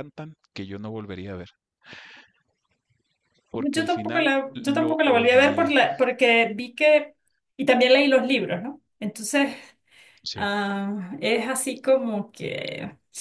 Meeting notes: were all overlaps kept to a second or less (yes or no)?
no